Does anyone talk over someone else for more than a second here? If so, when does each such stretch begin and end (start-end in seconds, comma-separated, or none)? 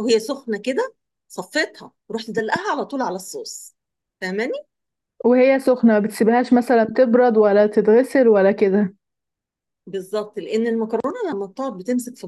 none